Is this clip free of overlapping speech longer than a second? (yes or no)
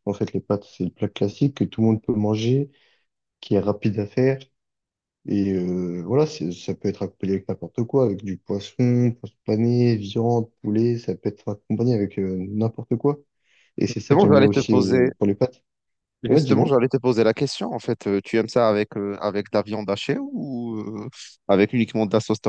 no